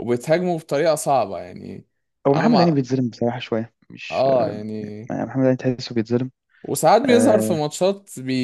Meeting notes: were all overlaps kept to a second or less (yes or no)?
yes